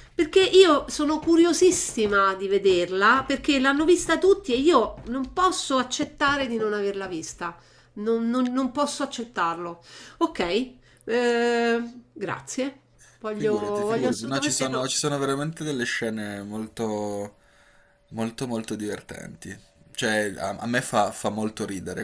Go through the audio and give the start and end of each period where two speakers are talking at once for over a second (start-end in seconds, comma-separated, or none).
13.3-14.9